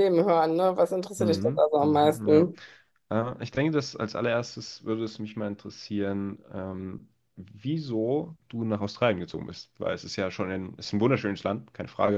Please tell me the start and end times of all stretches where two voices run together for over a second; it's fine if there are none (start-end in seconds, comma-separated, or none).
1.2-2.5